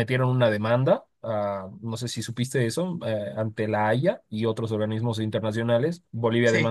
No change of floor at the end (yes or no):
yes